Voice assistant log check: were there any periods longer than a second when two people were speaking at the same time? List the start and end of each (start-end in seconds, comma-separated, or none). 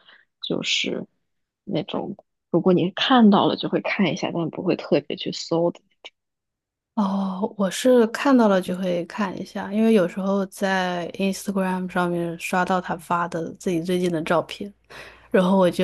none